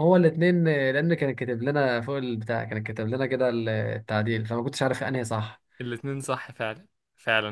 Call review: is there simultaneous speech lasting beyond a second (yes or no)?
no